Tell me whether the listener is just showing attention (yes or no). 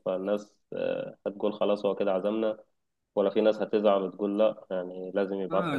no